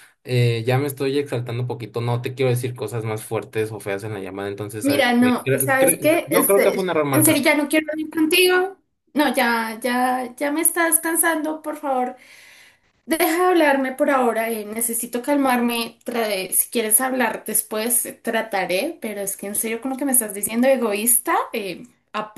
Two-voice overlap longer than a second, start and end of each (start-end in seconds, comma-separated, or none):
4.8-7.6